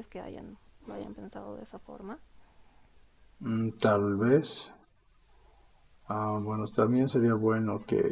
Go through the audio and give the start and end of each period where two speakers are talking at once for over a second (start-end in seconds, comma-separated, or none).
none